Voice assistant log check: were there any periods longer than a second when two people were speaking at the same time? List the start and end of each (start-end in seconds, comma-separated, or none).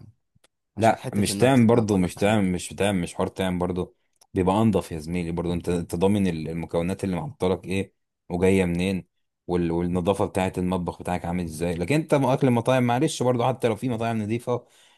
0.8-2.4